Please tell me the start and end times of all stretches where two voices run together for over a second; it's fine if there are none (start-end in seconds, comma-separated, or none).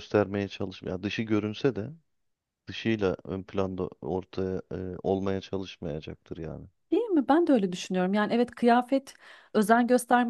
none